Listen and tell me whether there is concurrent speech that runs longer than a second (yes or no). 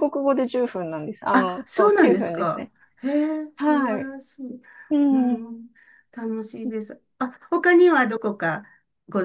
yes